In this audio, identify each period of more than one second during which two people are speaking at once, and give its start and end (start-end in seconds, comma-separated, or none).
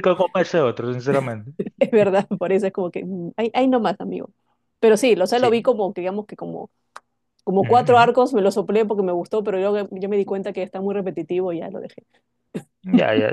none